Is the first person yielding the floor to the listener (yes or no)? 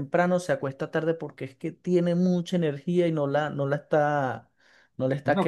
yes